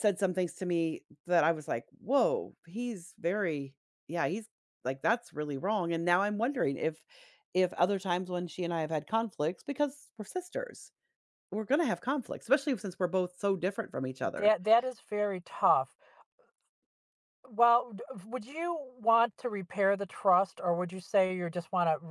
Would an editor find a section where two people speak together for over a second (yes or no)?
no